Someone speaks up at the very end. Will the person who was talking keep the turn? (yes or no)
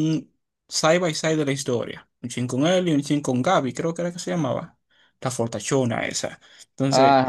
yes